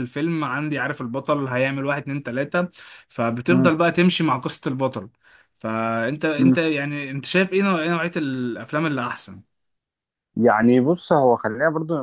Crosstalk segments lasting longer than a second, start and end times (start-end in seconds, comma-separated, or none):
none